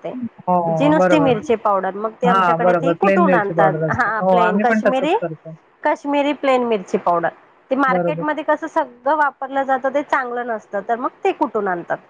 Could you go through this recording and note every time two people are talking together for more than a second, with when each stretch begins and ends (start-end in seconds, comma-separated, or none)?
2.2-5.1